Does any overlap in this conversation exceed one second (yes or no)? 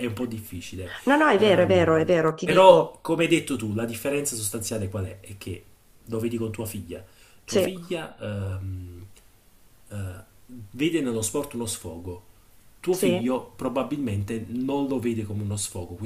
yes